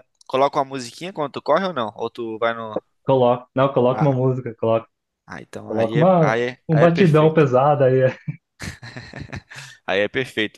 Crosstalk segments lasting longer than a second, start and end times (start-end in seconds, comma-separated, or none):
5.7-7.4